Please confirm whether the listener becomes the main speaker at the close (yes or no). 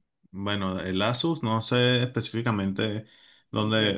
no